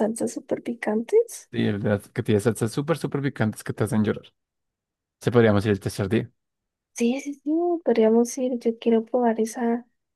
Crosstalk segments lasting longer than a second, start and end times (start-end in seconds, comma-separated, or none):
none